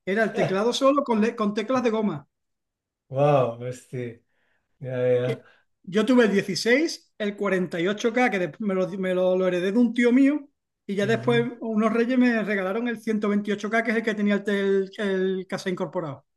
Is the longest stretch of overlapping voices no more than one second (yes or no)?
yes